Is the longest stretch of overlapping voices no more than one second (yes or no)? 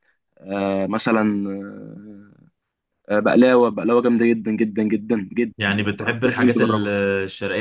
no